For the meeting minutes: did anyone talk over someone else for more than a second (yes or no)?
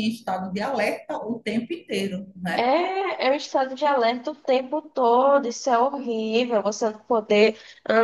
no